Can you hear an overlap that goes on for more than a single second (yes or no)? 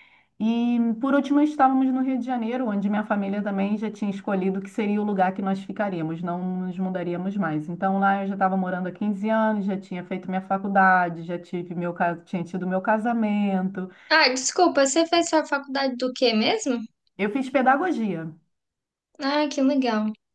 no